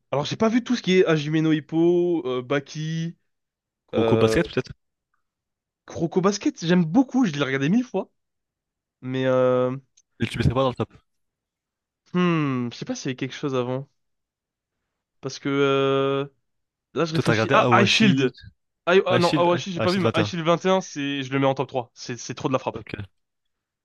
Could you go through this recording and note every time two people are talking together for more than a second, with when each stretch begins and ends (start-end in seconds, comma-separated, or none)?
17.1-18.3, 19.1-20.4